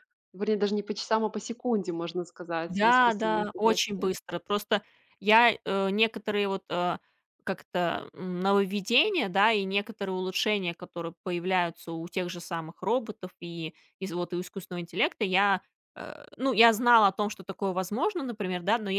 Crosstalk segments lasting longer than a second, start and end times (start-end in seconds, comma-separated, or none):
2.7-4.1